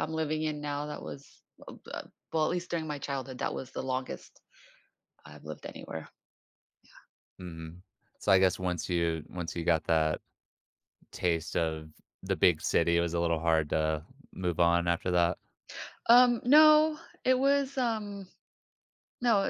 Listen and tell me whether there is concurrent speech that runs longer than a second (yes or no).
no